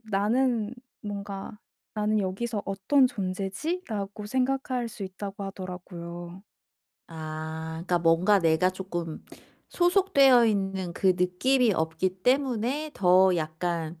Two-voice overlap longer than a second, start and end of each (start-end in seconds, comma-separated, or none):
none